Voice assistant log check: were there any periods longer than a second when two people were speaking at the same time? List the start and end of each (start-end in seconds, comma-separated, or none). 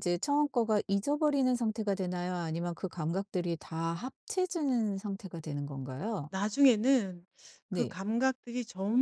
none